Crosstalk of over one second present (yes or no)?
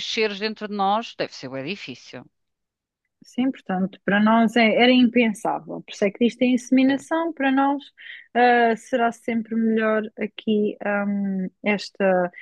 no